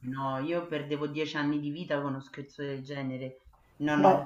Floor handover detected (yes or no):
yes